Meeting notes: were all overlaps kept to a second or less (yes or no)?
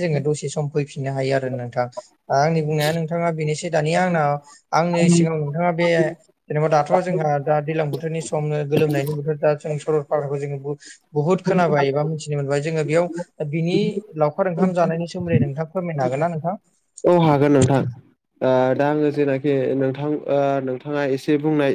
yes